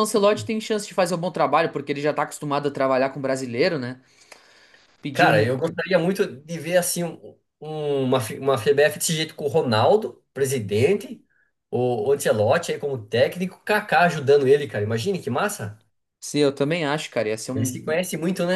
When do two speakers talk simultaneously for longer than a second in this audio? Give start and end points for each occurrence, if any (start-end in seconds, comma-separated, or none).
none